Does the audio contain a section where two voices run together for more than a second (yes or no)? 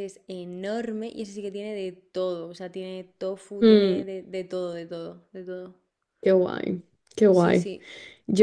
no